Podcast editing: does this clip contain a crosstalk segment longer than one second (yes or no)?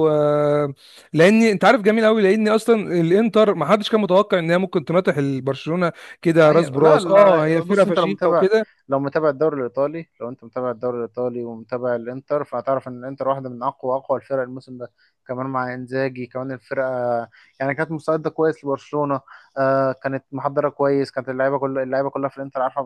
yes